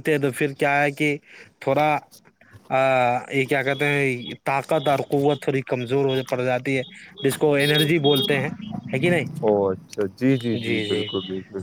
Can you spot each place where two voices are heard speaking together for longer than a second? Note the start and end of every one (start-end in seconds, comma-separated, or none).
none